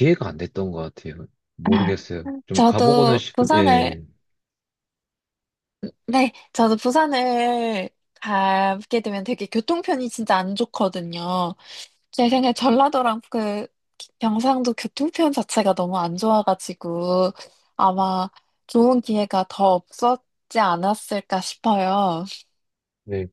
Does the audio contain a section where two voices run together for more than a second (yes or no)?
yes